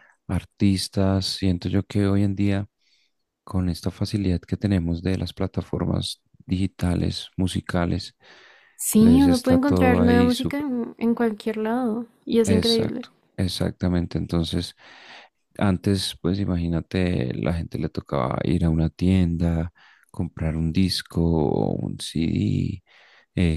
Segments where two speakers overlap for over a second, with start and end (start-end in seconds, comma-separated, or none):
9.0-10.3